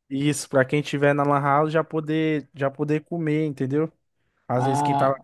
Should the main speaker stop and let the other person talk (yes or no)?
yes